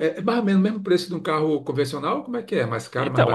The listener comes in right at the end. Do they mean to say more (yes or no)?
yes